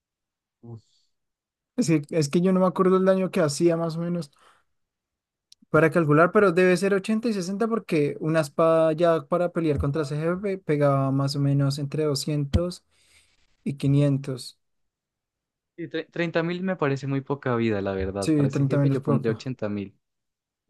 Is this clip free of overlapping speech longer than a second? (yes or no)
no